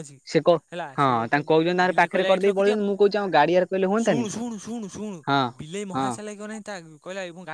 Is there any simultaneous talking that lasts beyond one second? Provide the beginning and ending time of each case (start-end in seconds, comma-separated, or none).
1.0-2.8